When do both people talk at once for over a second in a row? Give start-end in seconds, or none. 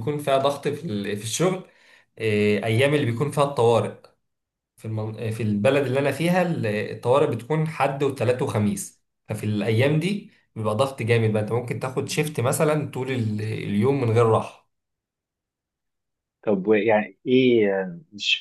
none